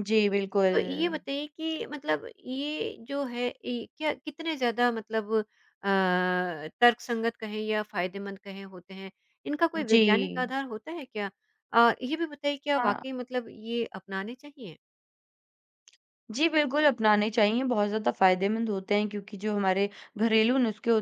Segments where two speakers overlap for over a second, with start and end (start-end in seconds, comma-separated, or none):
none